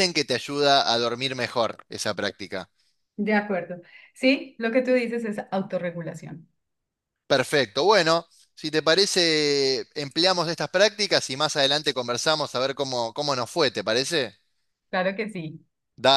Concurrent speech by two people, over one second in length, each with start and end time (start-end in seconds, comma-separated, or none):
none